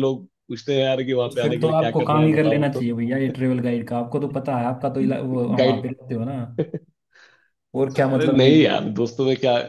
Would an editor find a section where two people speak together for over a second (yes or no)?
yes